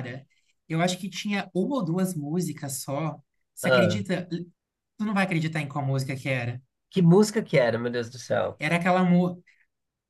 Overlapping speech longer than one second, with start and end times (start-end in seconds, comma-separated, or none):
none